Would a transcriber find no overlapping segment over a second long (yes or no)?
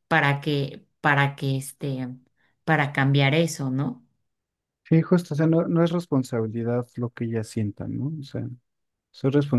yes